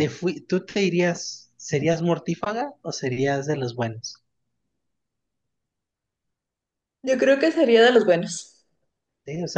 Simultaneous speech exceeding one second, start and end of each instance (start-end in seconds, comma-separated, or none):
none